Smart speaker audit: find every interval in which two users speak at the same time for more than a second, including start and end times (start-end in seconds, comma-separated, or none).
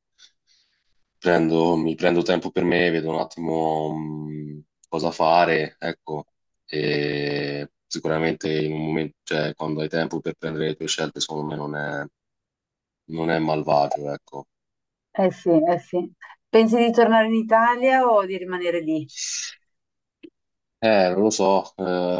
none